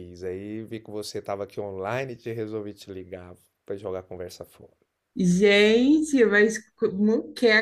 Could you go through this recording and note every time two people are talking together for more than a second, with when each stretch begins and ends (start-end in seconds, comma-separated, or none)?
none